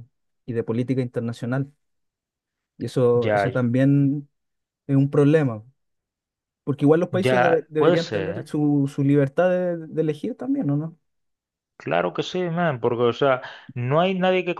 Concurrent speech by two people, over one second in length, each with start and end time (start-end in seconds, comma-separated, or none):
7.1-8.5